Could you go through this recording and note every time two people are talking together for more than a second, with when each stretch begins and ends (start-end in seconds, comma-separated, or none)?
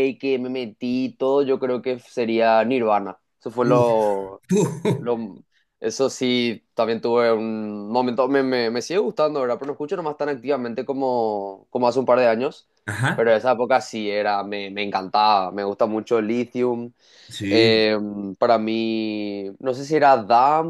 none